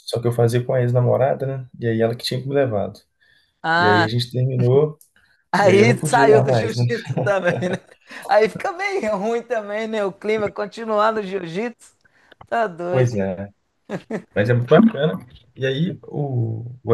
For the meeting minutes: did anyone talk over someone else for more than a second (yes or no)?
yes